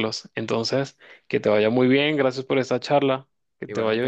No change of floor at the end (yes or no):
no